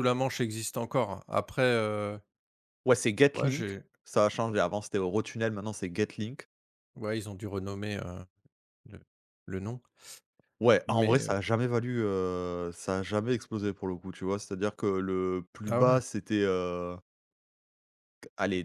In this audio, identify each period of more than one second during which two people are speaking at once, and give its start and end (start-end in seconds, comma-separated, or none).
none